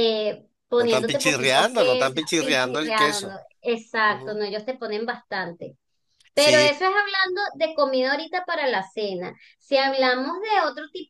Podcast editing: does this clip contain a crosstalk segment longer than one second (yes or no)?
yes